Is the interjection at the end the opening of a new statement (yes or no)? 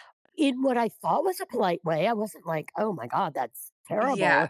no